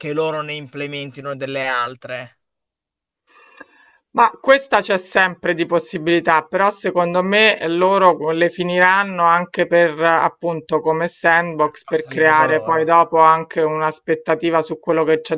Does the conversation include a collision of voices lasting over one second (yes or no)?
yes